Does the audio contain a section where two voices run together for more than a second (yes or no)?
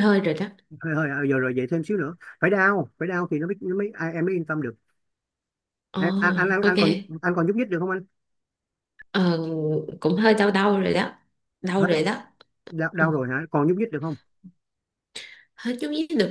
no